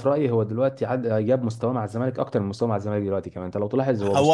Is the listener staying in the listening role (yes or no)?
no